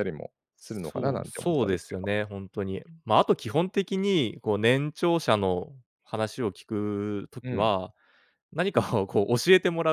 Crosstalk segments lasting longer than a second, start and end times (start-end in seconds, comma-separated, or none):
0.8-2.1